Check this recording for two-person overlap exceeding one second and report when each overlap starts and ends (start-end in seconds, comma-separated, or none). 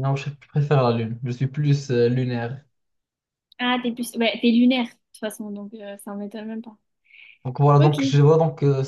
none